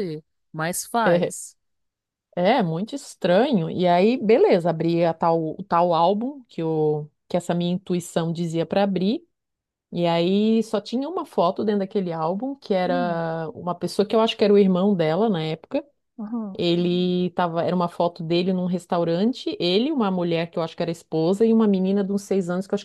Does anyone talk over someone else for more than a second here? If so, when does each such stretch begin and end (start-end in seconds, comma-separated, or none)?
none